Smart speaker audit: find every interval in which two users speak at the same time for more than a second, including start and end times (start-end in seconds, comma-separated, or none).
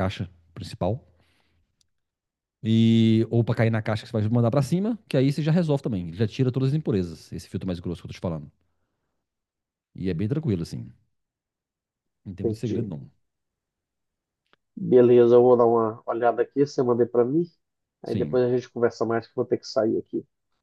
none